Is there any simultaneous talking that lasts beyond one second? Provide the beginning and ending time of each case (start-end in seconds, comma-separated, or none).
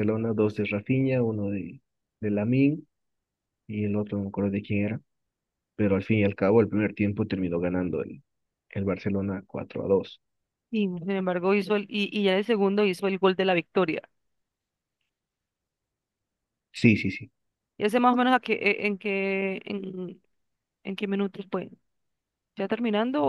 none